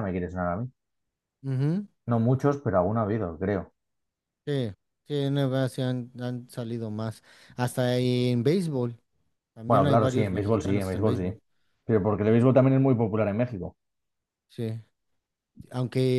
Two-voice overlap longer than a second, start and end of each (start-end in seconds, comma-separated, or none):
9.7-11.3